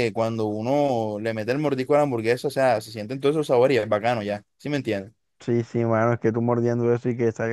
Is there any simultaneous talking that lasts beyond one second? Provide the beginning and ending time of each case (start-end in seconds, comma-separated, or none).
none